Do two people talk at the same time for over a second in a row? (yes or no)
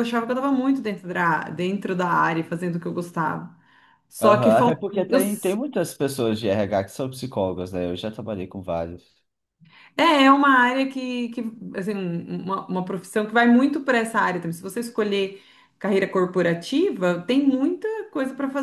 yes